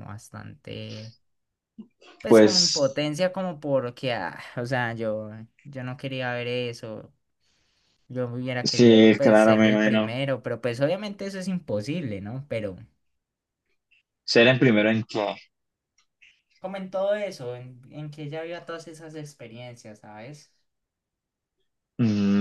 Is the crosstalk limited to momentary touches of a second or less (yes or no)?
no